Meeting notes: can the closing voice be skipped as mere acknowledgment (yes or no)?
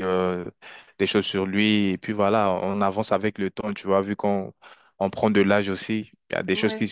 yes